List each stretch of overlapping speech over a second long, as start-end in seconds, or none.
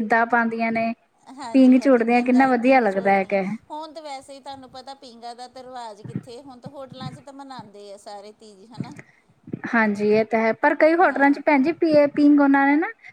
1.5-3.4